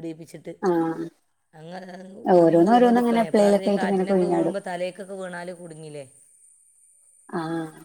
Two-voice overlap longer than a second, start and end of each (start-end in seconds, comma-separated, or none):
2.4-4.5